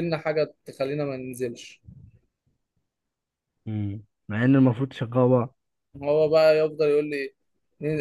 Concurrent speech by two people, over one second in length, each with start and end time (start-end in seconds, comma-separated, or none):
none